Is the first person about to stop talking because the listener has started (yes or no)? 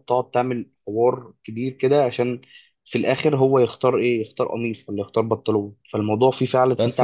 yes